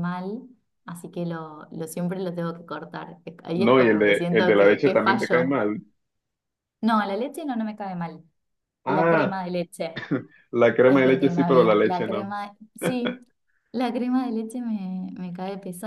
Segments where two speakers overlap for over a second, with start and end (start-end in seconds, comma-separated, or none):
3.5-5.6, 10.9-12.3